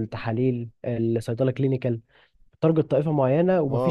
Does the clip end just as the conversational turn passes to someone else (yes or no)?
yes